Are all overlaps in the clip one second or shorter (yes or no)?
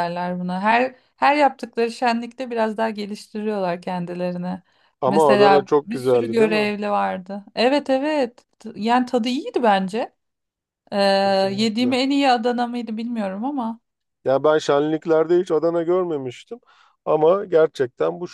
no